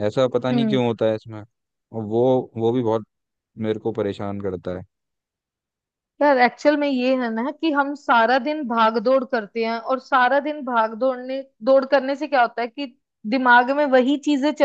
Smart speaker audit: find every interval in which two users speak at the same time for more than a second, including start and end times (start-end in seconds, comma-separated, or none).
none